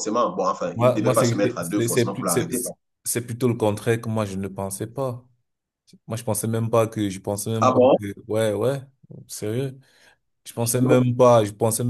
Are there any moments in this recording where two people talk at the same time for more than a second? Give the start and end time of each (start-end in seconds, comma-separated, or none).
0.7-2.5